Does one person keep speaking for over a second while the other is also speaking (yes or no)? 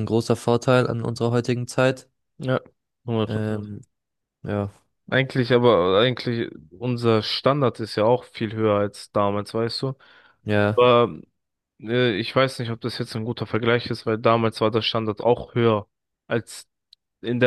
no